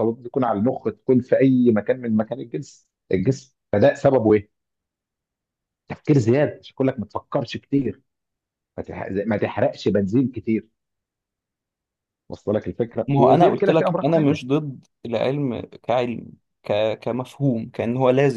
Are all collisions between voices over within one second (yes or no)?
no